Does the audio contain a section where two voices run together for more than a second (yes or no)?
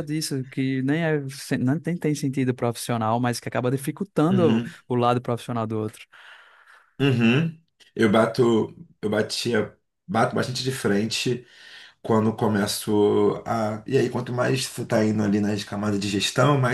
no